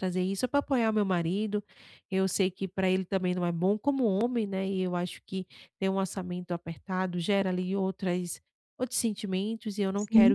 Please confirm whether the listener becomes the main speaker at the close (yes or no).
no